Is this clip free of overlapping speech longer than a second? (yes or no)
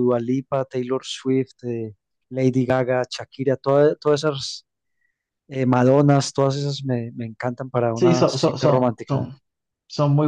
no